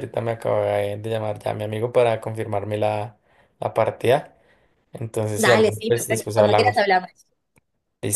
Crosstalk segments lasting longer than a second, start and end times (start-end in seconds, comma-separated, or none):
5.3-6.9